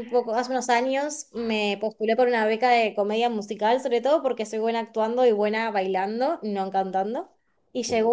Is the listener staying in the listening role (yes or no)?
yes